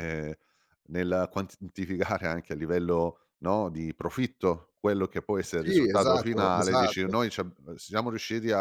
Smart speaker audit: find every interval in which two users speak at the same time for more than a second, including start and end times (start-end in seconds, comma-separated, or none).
5.5-7.1